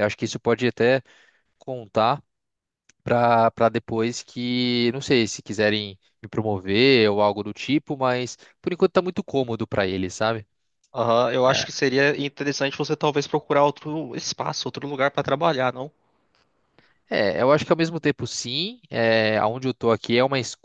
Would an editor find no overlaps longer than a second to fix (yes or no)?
yes